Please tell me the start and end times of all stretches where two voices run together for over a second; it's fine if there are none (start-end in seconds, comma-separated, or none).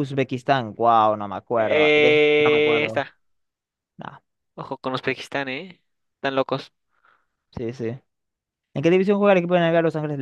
1.6-3.0